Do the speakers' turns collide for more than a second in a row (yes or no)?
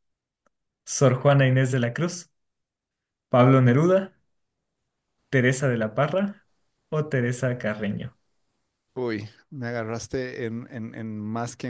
no